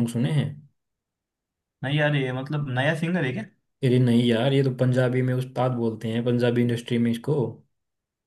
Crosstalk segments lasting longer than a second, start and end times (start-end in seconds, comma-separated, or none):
none